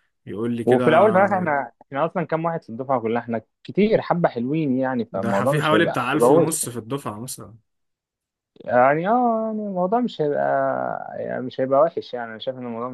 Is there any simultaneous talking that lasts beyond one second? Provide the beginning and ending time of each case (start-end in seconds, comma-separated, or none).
5.1-6.5